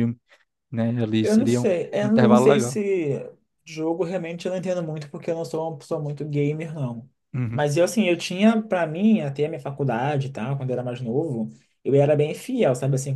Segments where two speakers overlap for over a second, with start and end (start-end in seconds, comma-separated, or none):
1.2-2.8